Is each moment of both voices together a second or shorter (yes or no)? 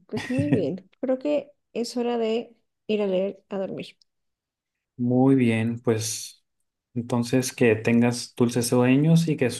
yes